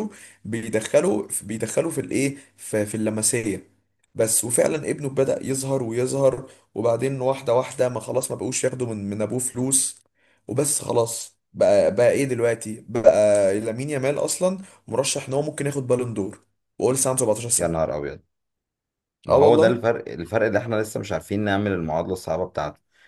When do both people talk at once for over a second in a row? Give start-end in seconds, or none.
none